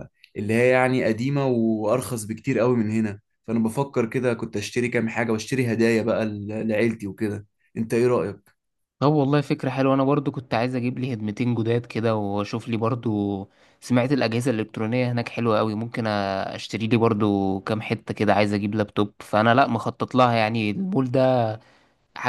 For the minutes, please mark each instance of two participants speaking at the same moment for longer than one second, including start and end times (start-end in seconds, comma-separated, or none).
none